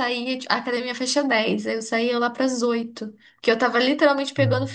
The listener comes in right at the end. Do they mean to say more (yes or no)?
no